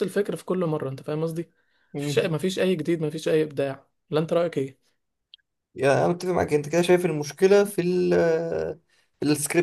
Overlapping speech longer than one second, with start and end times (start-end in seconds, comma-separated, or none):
none